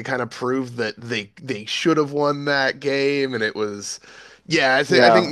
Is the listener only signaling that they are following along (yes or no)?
yes